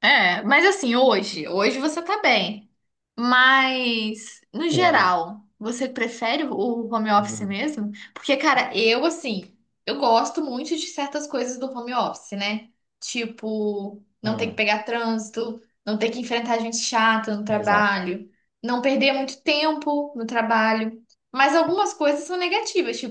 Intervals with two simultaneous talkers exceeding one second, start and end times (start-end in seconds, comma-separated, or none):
none